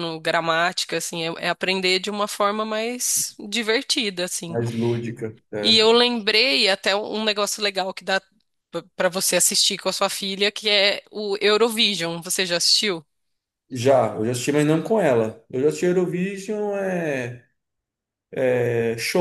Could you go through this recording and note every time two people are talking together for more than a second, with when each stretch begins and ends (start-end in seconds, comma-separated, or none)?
none